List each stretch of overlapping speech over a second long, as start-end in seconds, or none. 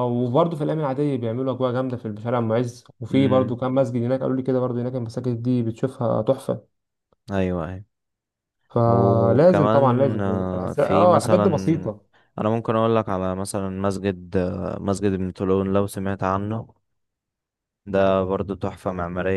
8.9-11.4